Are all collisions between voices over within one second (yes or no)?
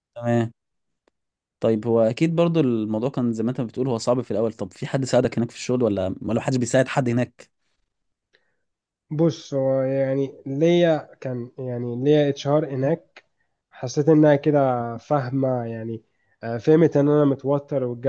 yes